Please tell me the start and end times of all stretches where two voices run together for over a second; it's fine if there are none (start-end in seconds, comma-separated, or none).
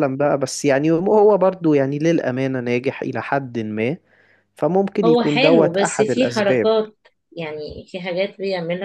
5.0-6.7